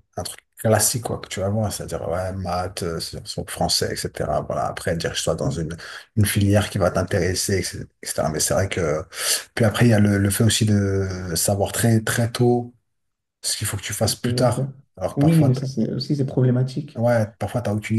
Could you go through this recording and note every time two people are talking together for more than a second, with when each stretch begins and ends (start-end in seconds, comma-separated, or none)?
none